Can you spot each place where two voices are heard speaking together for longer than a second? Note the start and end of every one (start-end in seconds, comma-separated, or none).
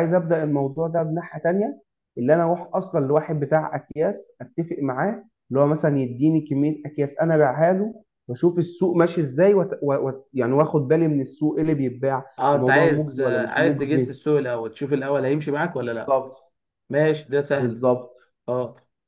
12.4-14.2